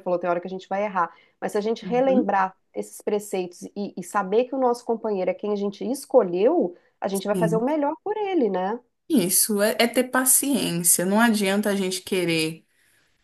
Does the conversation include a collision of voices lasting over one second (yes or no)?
no